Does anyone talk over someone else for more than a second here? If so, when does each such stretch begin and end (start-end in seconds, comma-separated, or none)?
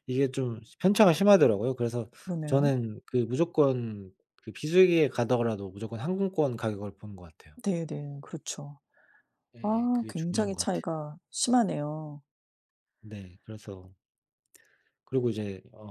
9.6-10.8